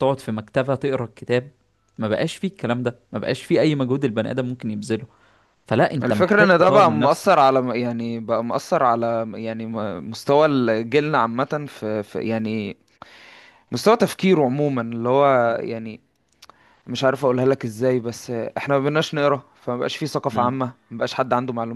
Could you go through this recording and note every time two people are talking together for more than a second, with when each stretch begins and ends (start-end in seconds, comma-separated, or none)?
6.0-7.4